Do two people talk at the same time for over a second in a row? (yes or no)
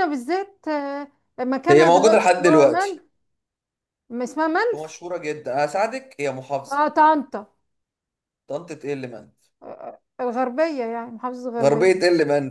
yes